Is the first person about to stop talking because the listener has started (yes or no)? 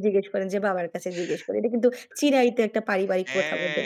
yes